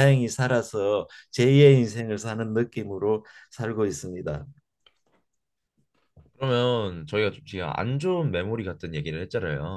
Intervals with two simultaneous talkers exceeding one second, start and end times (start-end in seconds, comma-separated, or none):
none